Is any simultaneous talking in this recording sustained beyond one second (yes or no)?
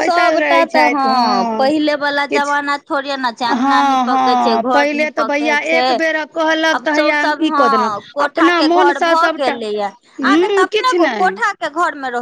yes